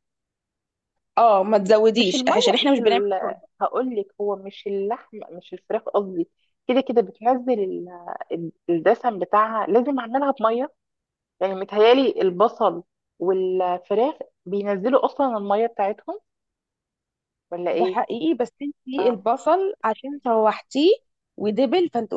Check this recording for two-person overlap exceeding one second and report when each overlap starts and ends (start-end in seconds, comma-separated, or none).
2.0-3.5